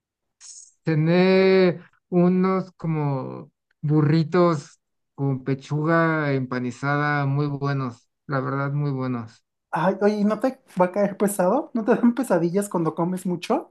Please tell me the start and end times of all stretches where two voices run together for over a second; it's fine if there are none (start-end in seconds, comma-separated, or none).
none